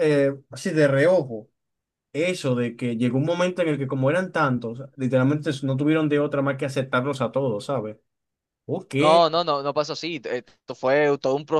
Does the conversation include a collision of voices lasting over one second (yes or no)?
no